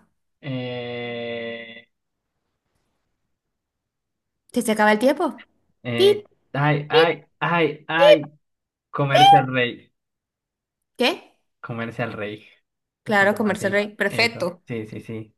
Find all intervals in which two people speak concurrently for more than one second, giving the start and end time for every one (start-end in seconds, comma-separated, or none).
13.1-14.6